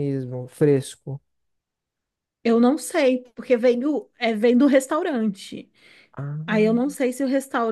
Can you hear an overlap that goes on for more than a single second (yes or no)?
no